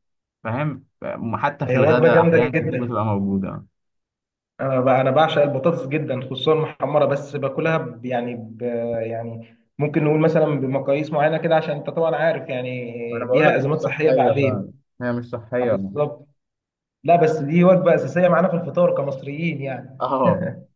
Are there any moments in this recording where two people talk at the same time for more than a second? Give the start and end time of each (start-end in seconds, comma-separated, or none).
1.7-3.0, 13.1-14.7